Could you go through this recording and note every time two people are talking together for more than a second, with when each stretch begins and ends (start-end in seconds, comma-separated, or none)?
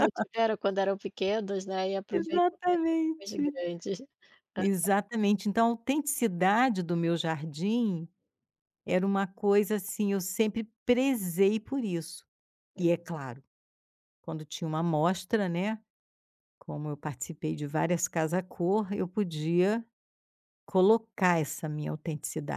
2.2-3.4